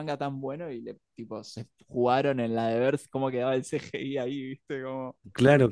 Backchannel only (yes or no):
no